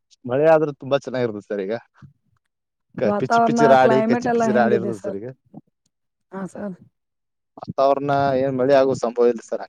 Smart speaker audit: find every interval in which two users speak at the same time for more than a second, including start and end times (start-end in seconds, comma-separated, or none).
3.1-4.9